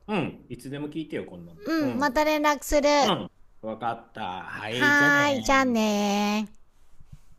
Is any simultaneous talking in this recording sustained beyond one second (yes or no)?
yes